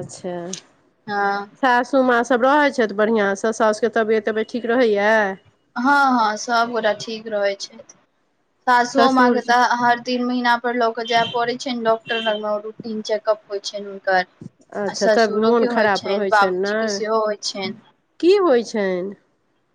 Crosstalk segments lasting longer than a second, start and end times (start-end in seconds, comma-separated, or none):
14.9-17.0